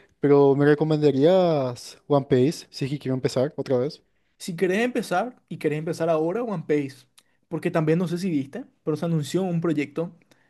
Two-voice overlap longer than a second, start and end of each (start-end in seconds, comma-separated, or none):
none